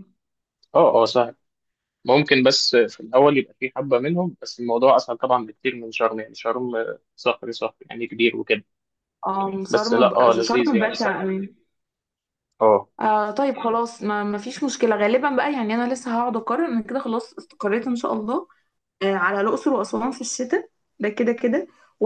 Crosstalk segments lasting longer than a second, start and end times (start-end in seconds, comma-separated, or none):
9.7-11.2